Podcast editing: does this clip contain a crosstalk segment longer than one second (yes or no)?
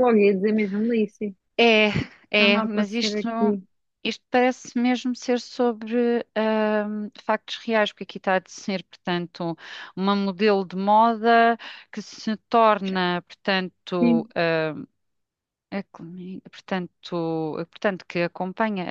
yes